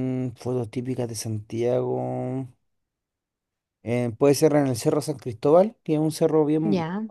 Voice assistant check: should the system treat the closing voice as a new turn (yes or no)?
no